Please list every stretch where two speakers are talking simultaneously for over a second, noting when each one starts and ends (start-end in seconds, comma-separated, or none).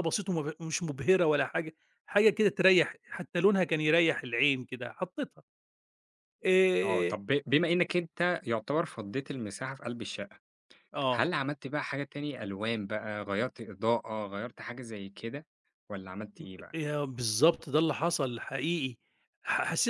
none